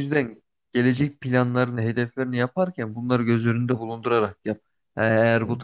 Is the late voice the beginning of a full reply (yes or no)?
no